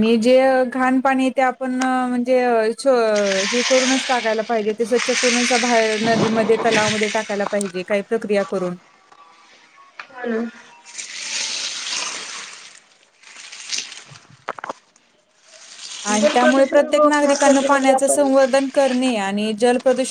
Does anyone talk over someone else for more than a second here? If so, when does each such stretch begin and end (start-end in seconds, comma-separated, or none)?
16.2-18.2